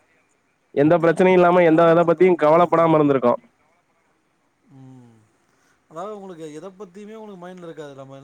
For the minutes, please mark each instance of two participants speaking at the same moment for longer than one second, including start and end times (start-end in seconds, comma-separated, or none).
1.0-3.1